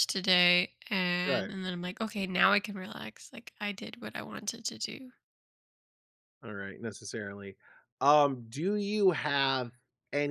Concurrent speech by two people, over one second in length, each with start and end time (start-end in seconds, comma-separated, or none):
none